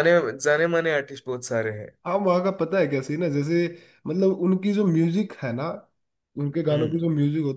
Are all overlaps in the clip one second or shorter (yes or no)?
yes